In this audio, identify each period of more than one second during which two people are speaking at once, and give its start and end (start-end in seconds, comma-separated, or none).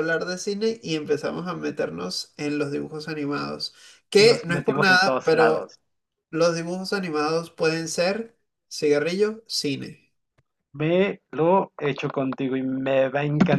4.2-5.8